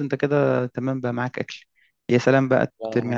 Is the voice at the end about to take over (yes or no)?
no